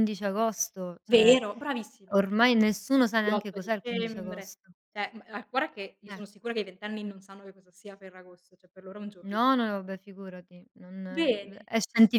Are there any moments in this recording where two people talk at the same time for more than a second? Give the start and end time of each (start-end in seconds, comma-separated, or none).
3.3-4.6